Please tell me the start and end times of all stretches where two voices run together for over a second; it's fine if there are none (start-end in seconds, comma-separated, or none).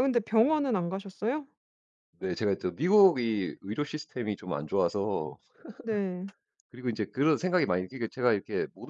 none